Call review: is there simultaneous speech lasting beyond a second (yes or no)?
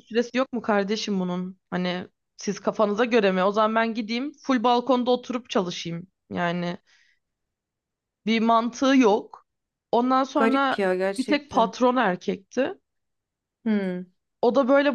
yes